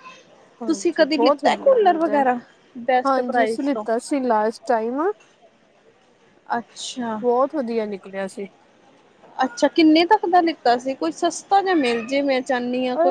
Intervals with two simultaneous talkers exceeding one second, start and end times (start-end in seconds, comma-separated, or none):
0.7-2.2